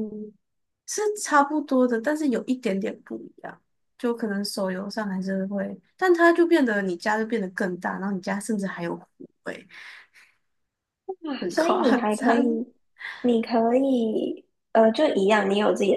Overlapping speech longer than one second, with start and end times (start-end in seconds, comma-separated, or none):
11.4-12.6